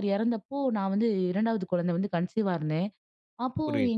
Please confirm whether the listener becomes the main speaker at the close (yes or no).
no